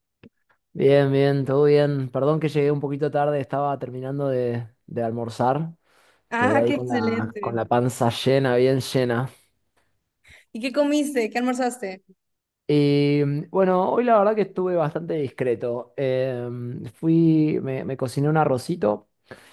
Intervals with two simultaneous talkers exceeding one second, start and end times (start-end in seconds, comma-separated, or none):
6.4-7.6